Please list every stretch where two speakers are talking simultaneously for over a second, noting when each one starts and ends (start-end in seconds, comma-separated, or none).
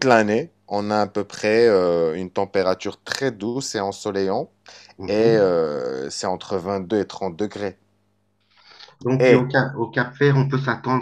none